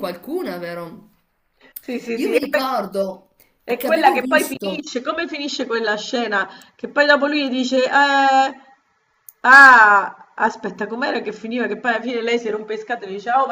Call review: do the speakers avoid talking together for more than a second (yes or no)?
no